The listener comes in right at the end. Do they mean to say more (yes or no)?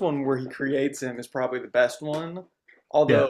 no